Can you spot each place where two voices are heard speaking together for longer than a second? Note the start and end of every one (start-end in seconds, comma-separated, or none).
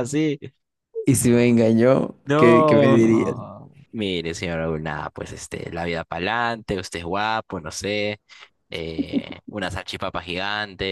2.1-3.4